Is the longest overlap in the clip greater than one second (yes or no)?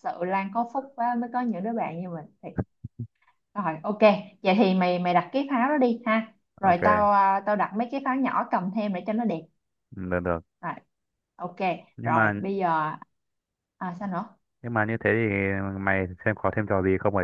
no